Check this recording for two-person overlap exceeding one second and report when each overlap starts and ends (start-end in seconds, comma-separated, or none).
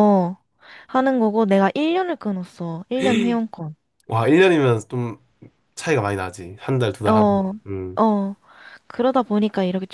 none